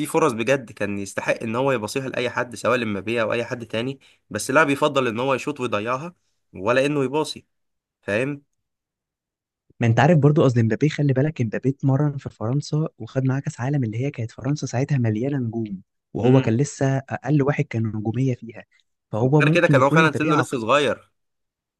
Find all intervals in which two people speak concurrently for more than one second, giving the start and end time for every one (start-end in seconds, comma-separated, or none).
19.2-20.6